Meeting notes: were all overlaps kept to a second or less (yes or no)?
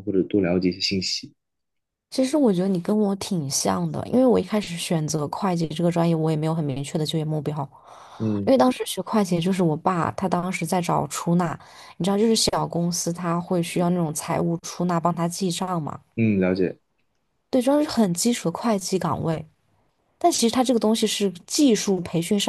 yes